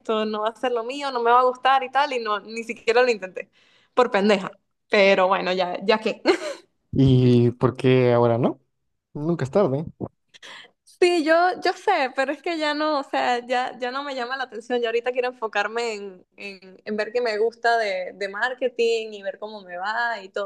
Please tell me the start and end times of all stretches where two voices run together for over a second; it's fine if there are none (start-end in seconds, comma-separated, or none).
none